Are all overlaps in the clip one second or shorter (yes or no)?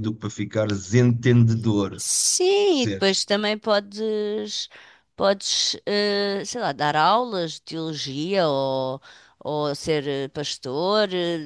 yes